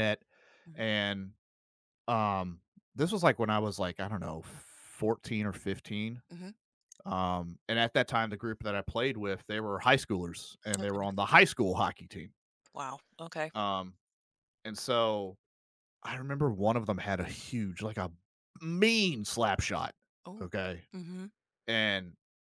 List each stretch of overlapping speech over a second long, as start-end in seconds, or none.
none